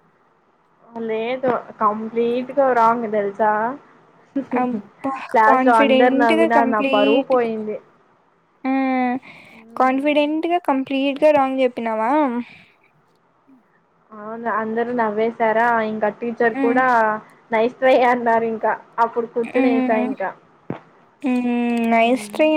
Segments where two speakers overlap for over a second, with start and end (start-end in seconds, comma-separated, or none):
5.5-7.5